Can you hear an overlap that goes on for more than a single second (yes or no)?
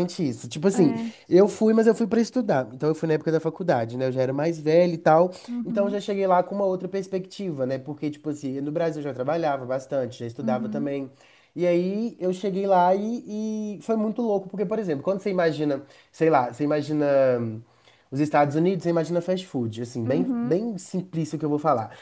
no